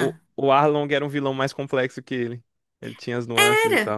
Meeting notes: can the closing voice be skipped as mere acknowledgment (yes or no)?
no